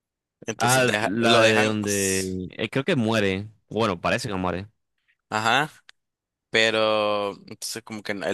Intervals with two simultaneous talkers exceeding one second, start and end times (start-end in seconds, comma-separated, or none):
0.6-2.3